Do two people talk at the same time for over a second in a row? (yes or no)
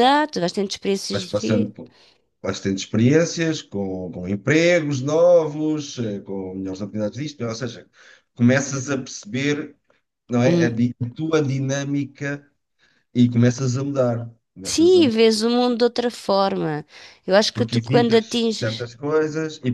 yes